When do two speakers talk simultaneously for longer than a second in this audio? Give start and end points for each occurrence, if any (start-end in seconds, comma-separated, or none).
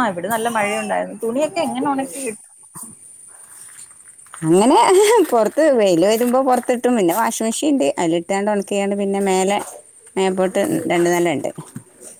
none